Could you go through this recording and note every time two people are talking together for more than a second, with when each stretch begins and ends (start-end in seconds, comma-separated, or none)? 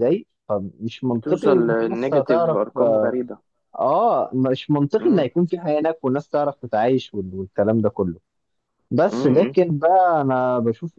1.1-3.1